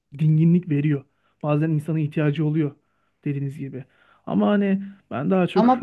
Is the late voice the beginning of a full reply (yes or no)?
no